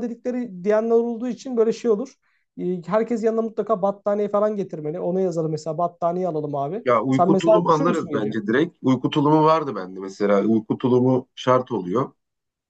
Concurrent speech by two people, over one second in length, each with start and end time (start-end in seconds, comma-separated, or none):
6.8-8.3